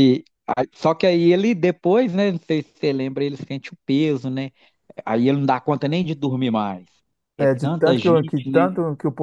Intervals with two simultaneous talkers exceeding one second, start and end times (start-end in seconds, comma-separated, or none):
7.4-8.7